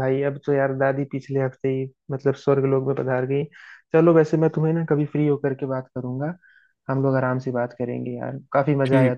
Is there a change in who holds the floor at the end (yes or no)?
yes